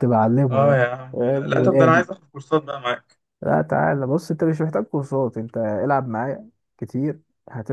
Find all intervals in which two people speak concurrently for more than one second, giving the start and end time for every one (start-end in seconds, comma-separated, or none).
0.5-2.1